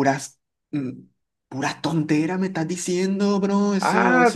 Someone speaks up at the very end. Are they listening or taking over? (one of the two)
taking over